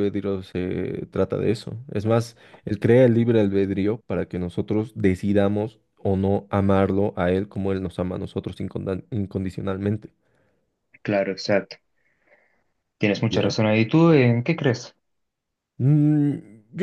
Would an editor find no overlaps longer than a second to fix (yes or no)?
yes